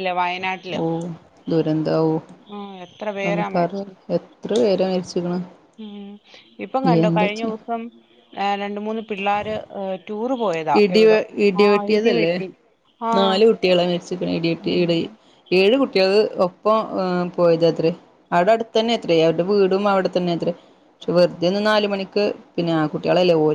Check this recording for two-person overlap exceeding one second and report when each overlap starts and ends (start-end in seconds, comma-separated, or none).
none